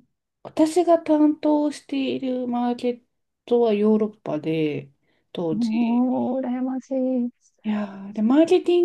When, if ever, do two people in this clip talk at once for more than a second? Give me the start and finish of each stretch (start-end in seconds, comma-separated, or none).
none